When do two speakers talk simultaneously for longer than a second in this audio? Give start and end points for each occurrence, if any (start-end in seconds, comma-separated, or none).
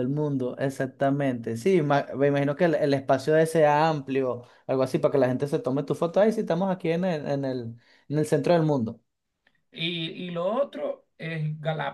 none